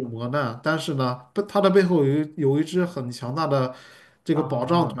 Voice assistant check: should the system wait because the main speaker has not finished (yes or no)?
yes